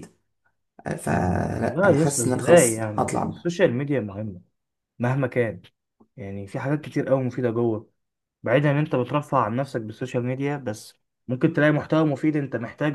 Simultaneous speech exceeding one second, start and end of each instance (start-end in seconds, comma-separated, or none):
1.1-3.5